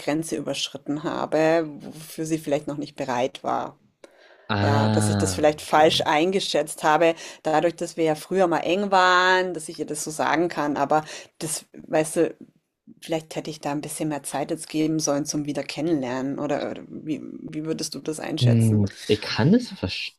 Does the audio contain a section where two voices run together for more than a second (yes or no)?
yes